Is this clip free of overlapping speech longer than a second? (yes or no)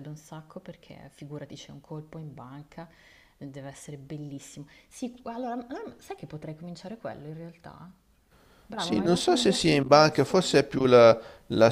no